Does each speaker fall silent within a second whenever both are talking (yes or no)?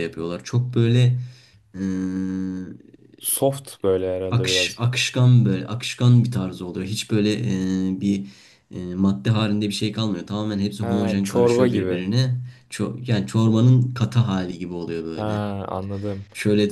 no